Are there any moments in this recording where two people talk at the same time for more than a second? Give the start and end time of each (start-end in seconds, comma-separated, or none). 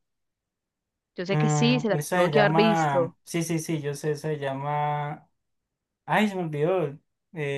1.3-3.1